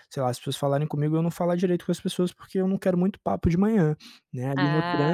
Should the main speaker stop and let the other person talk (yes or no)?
no